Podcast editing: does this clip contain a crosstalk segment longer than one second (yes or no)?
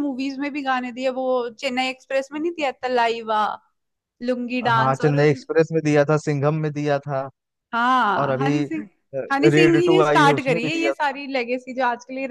yes